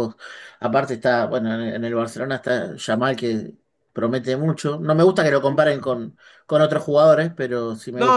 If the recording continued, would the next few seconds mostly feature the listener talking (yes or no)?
yes